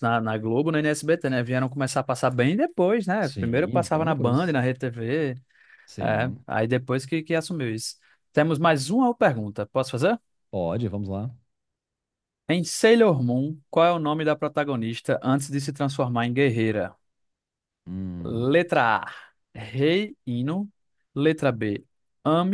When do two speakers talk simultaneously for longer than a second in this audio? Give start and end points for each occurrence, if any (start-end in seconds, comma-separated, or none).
3.2-4.6